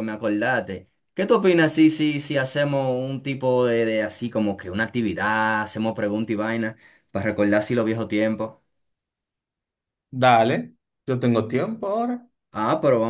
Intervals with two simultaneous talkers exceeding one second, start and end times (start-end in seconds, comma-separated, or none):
none